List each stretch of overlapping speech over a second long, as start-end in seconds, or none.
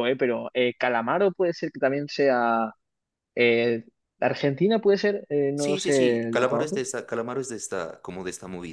5.5-6.9